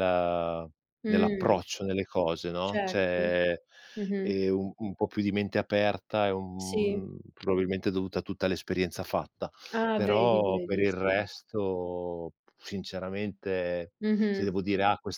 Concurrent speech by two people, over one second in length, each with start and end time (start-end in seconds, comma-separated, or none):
9.9-11.2